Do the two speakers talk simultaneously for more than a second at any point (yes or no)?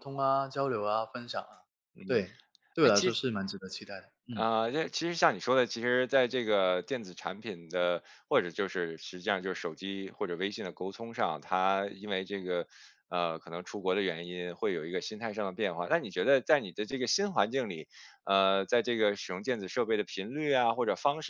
no